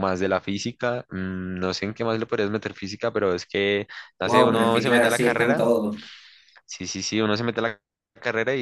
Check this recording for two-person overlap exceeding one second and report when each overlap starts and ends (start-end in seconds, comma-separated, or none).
4.2-5.6